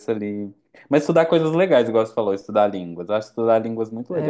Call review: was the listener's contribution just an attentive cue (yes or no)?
no